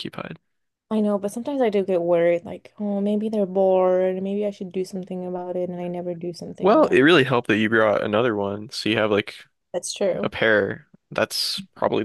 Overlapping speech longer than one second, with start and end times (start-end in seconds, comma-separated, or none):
none